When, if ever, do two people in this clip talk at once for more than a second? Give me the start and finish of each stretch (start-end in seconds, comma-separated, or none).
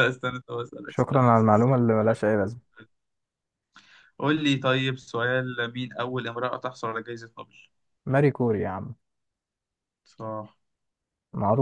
0.9-2.2